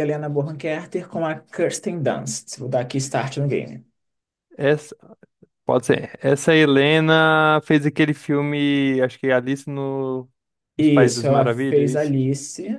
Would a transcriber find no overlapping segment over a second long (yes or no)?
no